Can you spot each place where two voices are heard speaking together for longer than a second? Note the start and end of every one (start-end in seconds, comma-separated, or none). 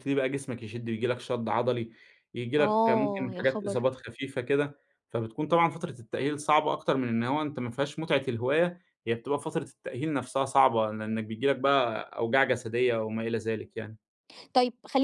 2.6-3.9